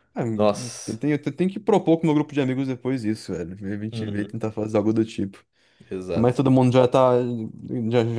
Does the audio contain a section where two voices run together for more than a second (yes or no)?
no